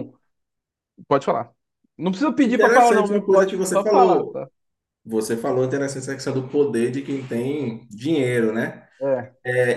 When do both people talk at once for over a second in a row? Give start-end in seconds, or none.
2.4-4.4